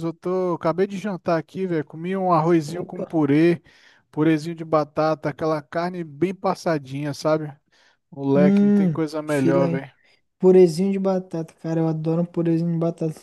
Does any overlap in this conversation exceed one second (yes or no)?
yes